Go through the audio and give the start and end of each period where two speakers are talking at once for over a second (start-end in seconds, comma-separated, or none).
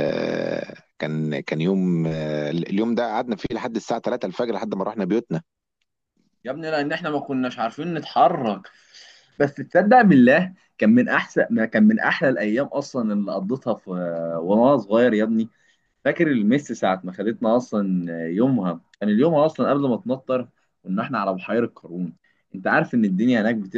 none